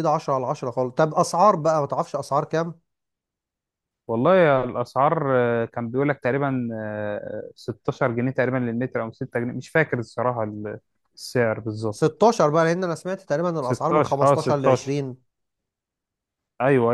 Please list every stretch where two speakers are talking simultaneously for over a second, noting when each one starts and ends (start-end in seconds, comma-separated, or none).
13.7-14.9